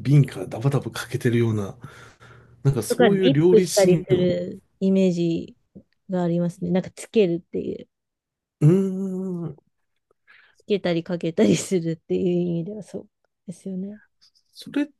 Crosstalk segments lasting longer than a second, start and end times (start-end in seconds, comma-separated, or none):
2.9-4.3